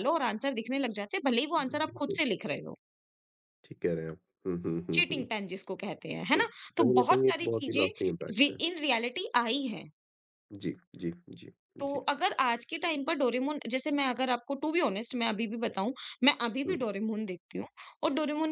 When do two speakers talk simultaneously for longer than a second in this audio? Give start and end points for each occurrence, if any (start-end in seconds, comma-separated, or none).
6.3-8.6